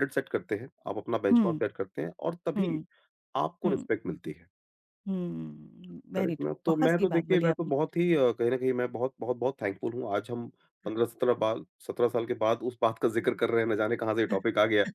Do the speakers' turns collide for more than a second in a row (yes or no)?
yes